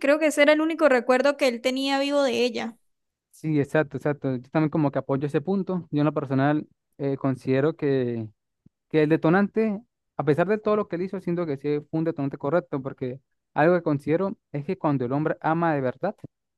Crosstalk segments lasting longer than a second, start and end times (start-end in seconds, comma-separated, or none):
none